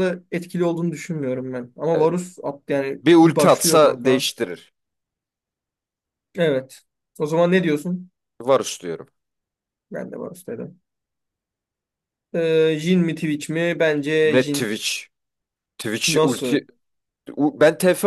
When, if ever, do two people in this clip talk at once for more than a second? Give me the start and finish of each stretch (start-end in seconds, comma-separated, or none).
3.0-4.2